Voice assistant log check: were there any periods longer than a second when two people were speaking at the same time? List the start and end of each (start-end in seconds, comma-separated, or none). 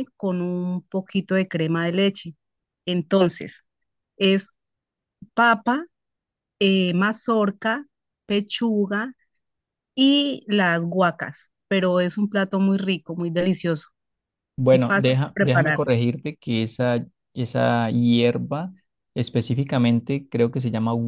14.7-15.9